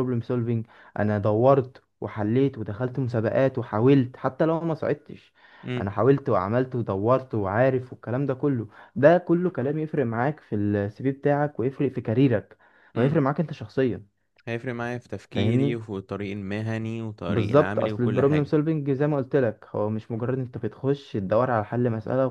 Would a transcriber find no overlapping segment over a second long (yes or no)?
no